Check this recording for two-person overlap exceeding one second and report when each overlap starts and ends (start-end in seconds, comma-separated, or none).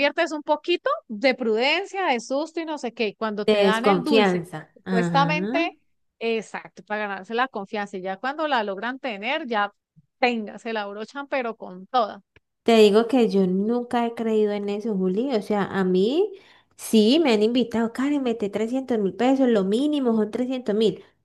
3.5-5.3